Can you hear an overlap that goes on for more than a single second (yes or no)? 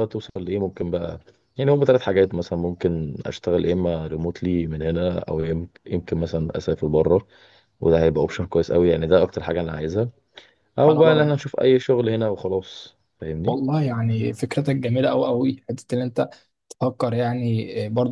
no